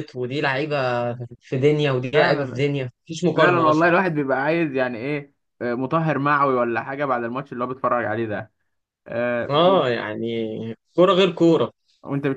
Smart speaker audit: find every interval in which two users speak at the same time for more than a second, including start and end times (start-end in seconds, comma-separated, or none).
none